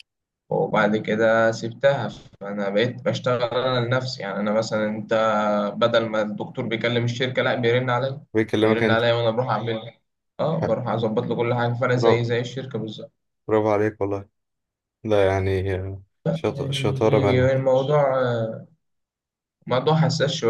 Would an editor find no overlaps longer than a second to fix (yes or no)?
no